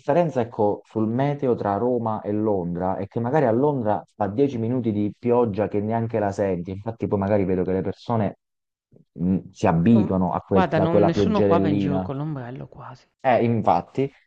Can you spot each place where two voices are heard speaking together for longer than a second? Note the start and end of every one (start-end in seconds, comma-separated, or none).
9.9-12.1